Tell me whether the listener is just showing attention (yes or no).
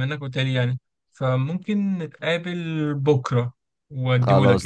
no